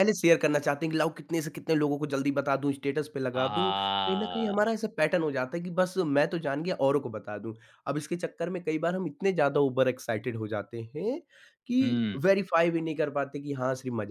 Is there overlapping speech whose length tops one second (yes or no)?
yes